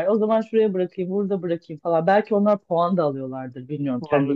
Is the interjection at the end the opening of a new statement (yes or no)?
no